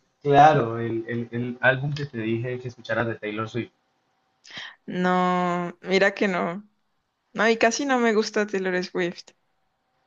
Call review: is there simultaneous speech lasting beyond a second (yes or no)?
no